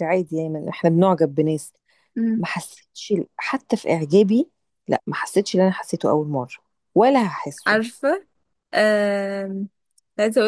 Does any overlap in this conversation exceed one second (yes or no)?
no